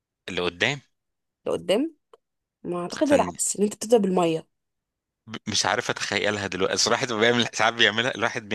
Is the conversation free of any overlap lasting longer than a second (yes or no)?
yes